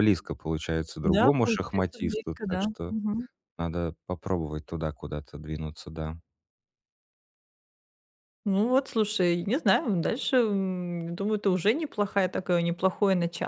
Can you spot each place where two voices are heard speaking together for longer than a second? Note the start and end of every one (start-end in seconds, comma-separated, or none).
1.0-2.7